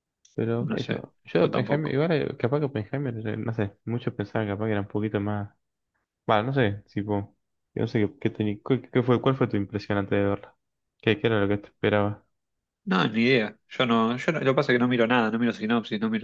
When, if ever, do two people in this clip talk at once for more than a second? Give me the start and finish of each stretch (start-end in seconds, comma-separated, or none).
0.6-2.0